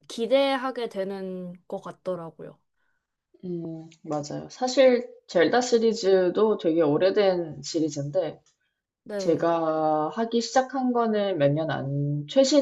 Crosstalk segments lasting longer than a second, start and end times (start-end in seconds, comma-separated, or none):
none